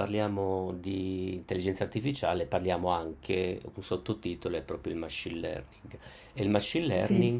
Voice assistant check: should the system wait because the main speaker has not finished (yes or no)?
yes